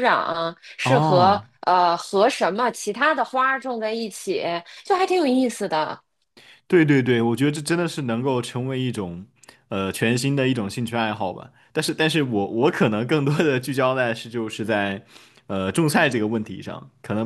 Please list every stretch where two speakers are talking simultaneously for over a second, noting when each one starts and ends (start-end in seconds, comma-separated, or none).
none